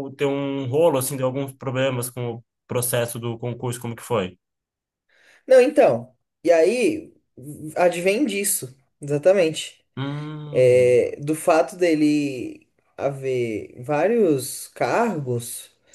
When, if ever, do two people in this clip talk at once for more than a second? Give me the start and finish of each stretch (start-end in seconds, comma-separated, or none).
none